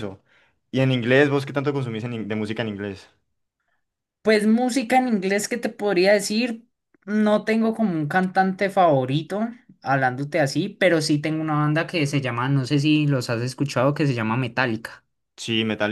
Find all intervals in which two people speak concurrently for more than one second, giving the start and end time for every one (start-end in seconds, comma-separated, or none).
none